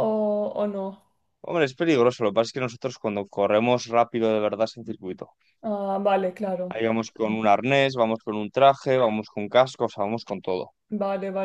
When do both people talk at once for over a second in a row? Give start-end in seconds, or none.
none